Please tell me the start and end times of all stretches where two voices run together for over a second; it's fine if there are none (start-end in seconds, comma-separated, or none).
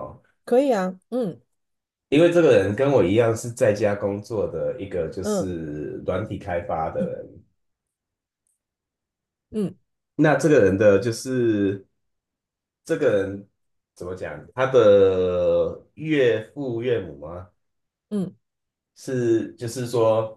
none